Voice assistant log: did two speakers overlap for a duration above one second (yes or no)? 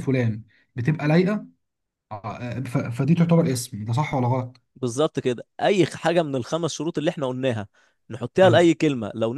no